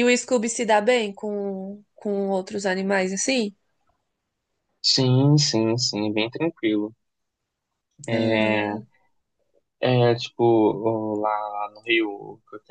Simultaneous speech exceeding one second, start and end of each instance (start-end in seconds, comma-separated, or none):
none